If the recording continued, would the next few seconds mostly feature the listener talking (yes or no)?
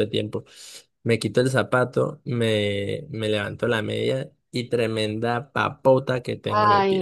yes